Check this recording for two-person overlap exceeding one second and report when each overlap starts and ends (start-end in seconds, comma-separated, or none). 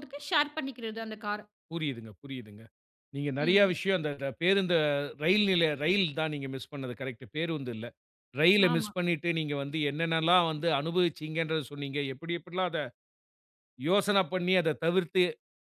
none